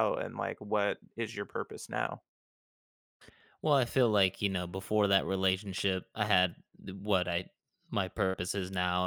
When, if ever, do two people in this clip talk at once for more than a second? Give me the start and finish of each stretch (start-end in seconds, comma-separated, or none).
none